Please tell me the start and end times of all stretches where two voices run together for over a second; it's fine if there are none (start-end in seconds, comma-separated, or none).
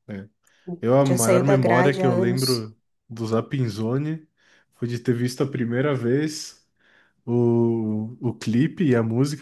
1.1-2.7